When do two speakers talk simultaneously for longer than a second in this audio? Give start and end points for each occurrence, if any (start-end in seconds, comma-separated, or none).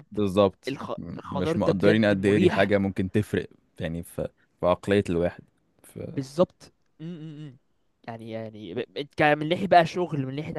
0.7-2.7